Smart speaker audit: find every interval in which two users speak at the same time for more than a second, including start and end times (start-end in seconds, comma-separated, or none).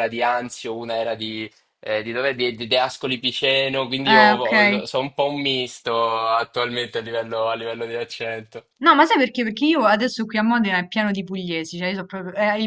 none